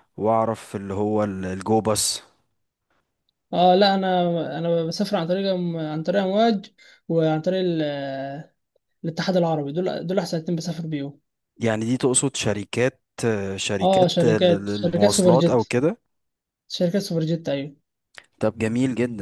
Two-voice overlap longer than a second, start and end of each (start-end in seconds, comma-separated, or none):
13.8-15.7